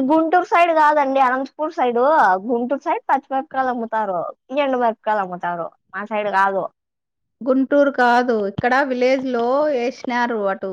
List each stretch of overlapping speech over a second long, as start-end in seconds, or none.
none